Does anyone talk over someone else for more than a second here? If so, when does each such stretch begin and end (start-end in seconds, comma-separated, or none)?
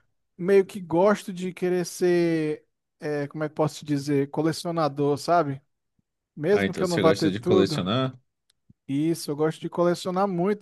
6.5-7.8